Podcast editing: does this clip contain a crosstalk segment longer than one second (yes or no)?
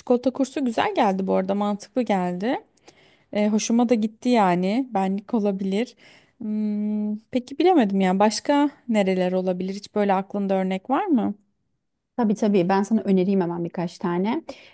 no